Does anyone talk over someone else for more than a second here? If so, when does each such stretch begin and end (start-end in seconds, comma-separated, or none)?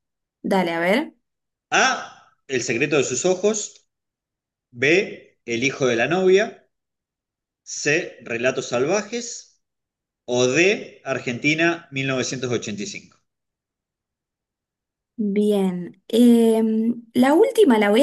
none